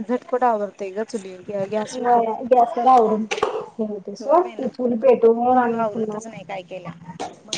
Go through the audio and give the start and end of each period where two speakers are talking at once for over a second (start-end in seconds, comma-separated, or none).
4.2-6.2